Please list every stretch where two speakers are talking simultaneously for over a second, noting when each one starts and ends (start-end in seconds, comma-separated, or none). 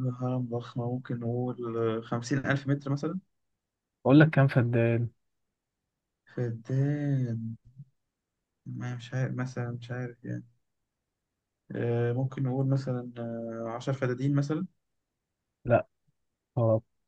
none